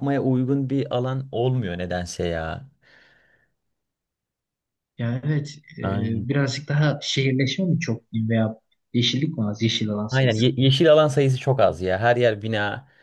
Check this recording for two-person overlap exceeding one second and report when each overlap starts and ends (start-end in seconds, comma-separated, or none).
none